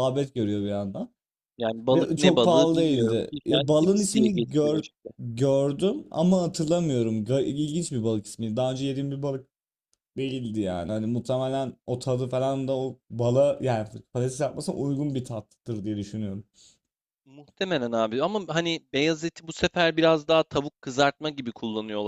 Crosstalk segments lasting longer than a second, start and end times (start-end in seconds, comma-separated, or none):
1.9-4.8